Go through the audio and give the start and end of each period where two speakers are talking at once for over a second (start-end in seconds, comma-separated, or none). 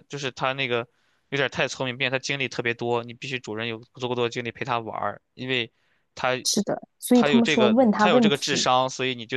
7.1-8.7